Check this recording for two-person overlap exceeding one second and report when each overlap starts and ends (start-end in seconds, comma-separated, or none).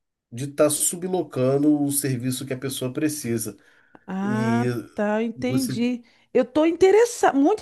none